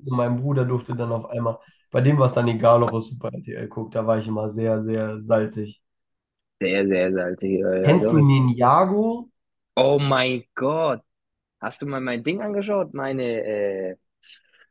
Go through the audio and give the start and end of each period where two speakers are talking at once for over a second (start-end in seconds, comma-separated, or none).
none